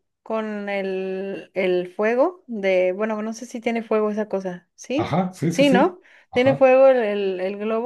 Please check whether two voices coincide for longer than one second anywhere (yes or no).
yes